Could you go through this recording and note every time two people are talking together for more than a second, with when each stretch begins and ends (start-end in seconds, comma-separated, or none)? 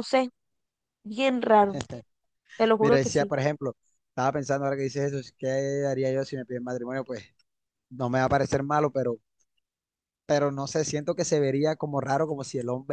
none